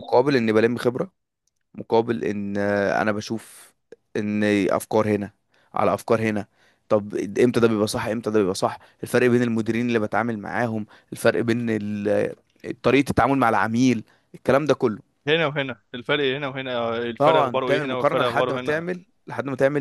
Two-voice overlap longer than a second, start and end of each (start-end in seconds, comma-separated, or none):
17.2-18.9